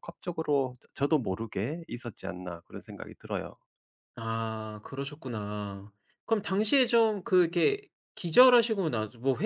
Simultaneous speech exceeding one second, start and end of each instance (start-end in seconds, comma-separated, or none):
none